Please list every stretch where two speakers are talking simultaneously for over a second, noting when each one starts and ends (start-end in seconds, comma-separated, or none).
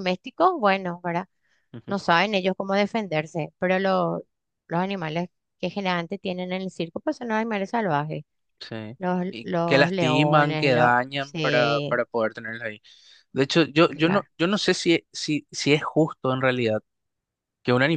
9.0-12.0